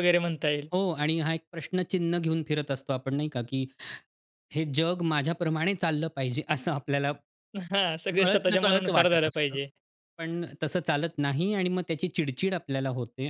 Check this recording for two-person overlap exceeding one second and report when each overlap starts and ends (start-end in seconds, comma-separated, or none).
8.2-9.6